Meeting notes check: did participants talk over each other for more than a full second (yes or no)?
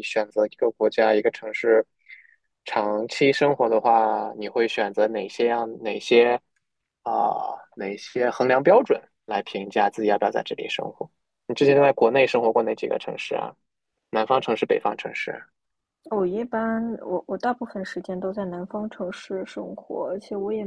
no